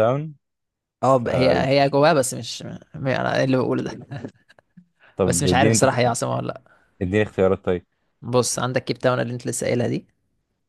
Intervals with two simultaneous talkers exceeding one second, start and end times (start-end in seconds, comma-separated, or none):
none